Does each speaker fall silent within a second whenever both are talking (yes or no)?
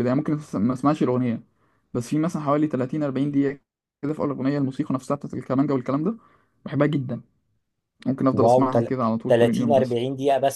no